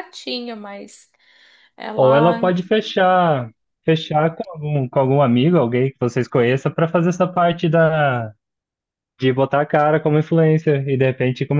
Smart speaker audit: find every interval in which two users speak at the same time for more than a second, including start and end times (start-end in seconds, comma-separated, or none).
none